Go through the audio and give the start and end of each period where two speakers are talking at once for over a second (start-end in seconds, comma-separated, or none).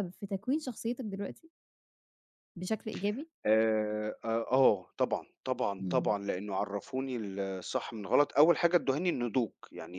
none